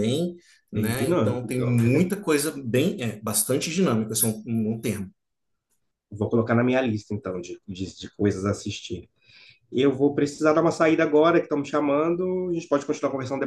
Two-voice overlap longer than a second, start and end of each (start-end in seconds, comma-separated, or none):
0.7-2.1